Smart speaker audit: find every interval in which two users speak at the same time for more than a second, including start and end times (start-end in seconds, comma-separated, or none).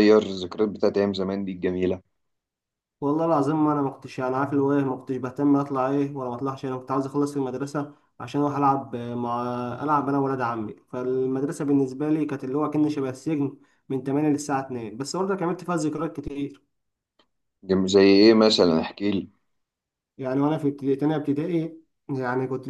none